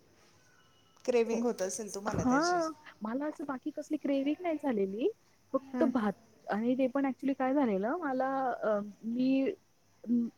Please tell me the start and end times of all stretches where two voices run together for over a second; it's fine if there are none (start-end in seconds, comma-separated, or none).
none